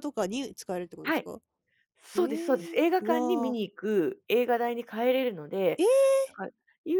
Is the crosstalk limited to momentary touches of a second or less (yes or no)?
no